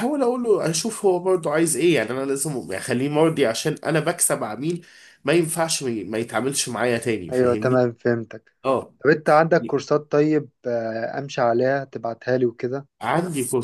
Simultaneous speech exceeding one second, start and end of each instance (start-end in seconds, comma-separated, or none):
none